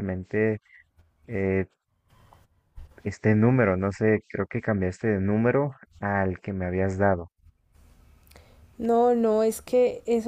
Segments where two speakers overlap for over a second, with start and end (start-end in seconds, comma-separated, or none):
none